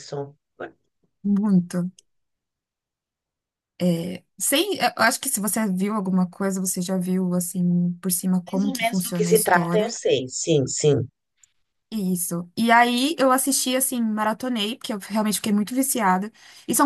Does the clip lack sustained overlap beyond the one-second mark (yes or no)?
no